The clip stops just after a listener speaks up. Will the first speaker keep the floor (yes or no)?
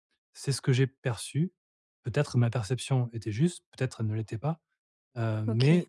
yes